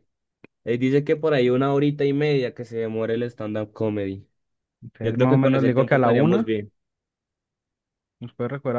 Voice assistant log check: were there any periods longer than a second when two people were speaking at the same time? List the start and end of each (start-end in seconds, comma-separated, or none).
5.0-6.5